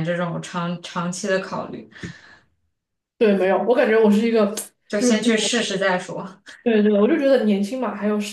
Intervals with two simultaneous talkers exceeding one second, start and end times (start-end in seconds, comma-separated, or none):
none